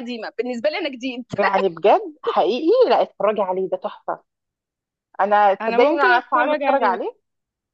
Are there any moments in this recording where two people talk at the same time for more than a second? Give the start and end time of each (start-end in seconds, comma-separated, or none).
5.6-7.0